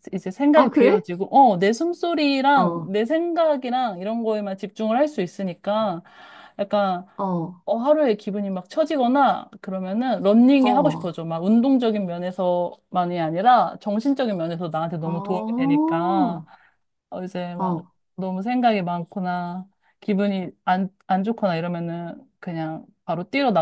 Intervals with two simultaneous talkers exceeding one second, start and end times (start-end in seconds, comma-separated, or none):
15.1-16.4